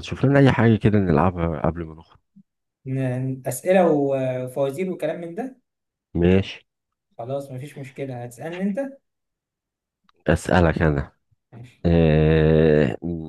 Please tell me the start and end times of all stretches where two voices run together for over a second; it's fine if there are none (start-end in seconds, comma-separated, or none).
none